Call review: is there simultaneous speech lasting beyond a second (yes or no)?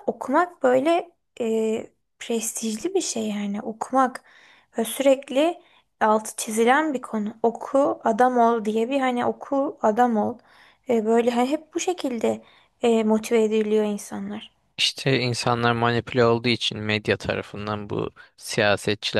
no